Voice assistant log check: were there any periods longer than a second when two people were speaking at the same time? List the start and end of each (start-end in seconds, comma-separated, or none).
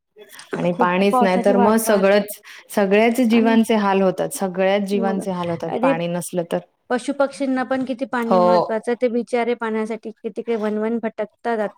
0.7-2.3